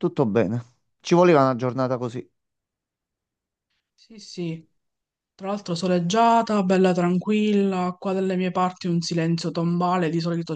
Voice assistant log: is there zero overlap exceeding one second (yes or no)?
yes